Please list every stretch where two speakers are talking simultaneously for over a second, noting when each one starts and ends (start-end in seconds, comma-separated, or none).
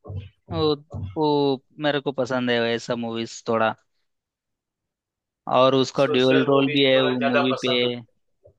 6.0-7.7